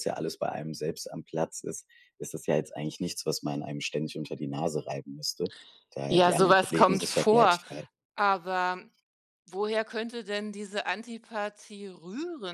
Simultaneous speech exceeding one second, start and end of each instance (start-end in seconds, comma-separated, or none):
6.1-7.6